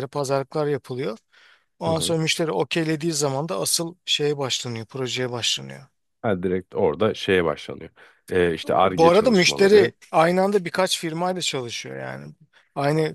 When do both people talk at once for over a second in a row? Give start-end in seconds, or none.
8.6-9.9